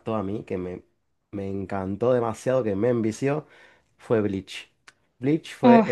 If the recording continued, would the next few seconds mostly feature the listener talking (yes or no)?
no